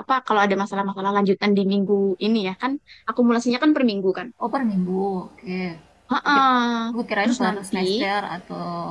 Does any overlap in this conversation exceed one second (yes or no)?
no